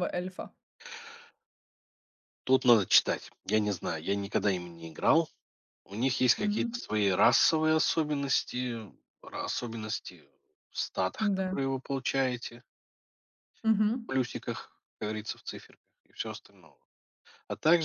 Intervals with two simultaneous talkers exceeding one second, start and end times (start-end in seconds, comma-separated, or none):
none